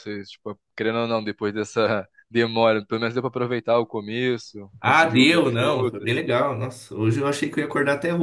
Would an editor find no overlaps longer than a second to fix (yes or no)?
no